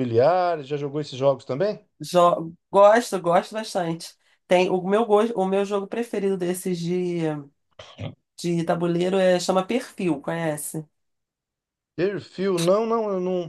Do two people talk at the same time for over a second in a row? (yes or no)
no